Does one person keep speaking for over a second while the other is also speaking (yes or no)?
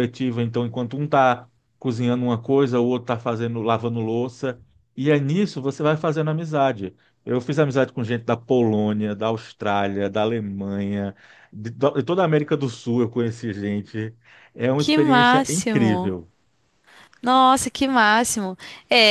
yes